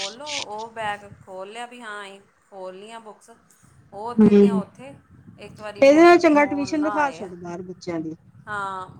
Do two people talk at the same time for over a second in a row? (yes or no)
yes